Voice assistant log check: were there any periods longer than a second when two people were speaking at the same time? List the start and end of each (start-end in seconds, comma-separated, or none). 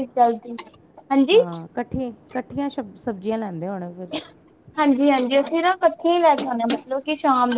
none